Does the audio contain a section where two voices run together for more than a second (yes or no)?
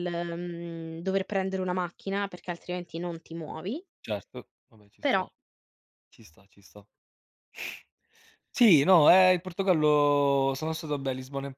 no